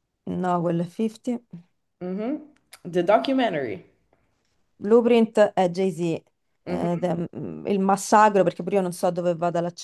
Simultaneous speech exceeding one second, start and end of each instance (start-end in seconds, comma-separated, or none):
none